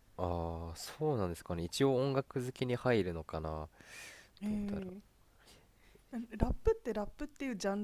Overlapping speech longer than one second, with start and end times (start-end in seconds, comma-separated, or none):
none